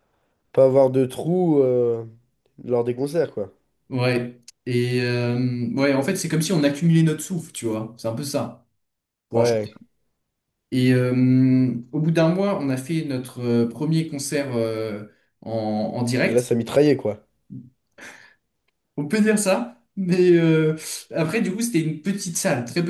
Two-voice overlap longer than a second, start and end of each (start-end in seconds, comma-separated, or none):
none